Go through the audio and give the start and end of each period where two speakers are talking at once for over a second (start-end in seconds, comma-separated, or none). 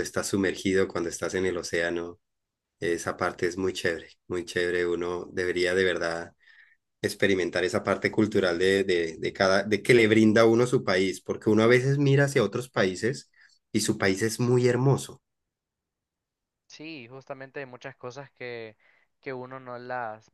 none